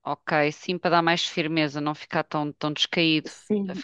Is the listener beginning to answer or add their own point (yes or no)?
yes